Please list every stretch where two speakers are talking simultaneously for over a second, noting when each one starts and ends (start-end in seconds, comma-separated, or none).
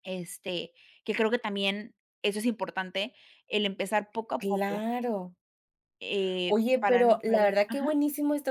6.5-7.9